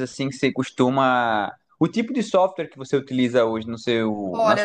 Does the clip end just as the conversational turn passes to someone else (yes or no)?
yes